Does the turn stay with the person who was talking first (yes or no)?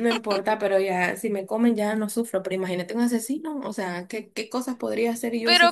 no